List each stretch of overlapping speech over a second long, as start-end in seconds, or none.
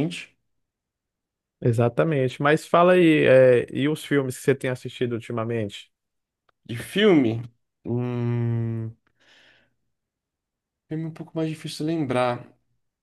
none